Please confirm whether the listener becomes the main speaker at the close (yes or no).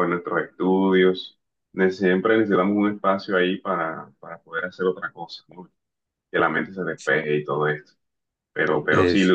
no